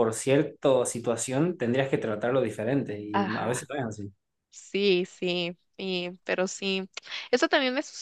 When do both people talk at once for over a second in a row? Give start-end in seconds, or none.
none